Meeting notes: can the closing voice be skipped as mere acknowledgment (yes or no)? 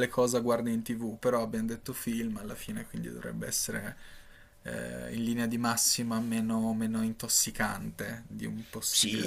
no